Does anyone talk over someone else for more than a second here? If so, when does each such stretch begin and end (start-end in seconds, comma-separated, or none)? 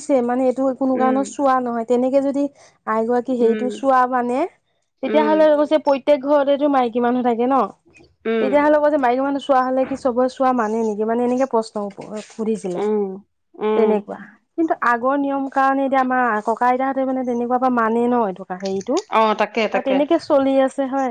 none